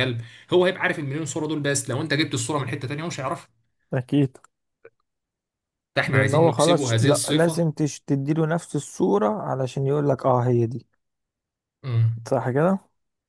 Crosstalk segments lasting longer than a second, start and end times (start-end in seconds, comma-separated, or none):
6.1-7.7